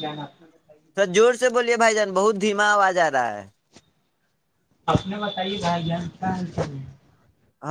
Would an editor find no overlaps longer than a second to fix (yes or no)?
yes